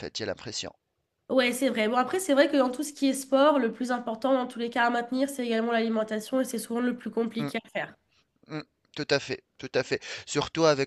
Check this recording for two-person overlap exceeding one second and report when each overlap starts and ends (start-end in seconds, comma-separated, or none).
none